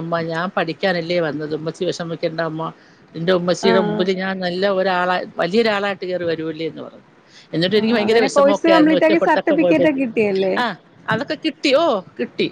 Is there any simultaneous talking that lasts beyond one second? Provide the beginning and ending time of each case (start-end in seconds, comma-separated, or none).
7.8-10.0